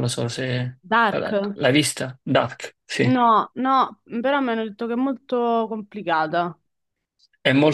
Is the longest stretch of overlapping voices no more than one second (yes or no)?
yes